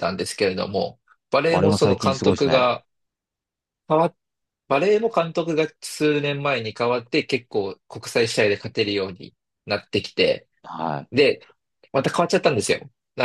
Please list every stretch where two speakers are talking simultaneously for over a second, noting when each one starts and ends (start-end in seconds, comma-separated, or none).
1.5-2.7